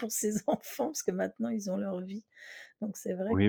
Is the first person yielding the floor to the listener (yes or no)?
yes